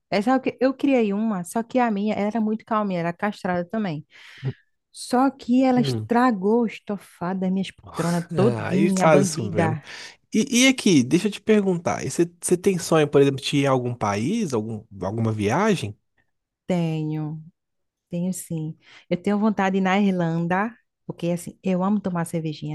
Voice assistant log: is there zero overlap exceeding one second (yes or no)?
no